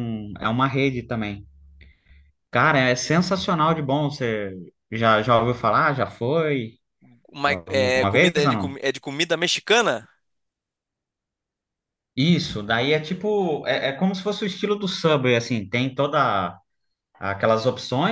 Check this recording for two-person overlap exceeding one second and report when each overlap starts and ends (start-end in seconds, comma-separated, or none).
7.5-8.8